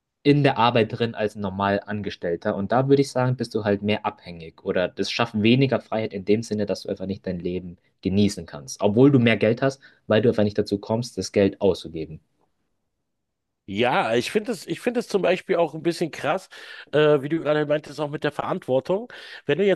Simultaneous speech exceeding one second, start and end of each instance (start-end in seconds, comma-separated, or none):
none